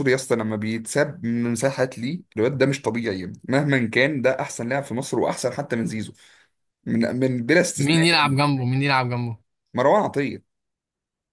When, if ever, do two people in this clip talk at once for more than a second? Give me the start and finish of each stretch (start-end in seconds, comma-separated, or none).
none